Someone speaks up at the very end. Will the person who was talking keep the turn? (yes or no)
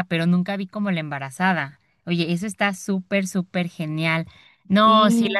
yes